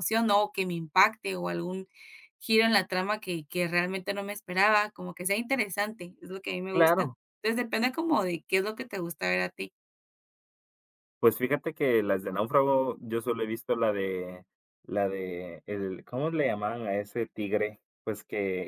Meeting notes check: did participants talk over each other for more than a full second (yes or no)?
no